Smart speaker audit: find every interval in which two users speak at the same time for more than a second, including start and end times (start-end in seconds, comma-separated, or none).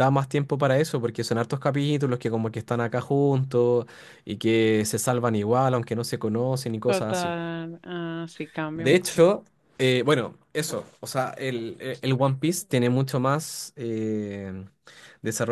none